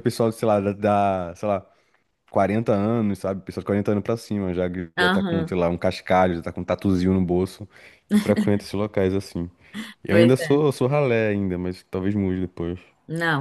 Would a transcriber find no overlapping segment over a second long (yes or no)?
yes